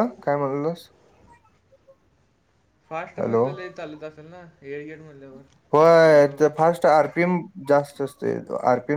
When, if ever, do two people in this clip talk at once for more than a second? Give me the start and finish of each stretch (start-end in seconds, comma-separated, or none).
none